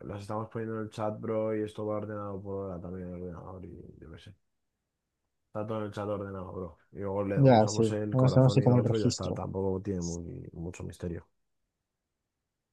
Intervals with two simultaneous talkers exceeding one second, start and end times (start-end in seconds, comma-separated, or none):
7.5-9.4